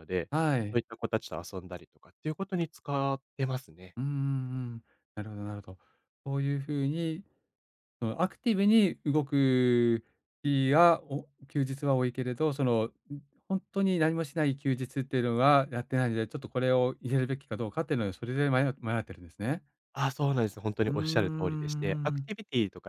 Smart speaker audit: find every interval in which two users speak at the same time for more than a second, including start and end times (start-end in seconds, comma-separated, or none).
20.9-22.3